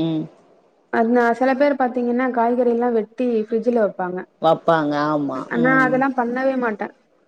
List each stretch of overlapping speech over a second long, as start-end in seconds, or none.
none